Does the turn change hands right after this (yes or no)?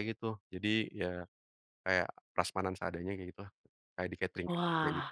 yes